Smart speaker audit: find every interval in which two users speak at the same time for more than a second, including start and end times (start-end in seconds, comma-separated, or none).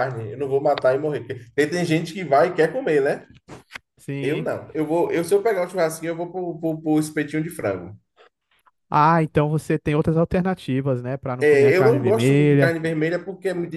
11.4-12.8